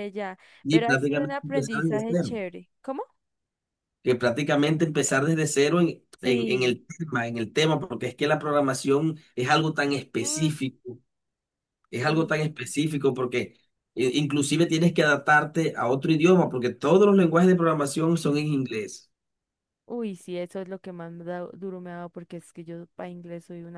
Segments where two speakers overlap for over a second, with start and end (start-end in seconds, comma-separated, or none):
0.6-2.3